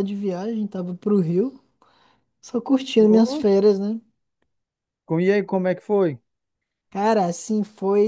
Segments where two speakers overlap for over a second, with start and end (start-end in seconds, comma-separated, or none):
none